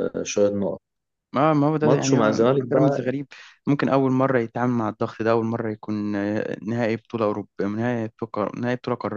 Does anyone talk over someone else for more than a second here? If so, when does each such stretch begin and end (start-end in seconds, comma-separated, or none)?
1.8-3.1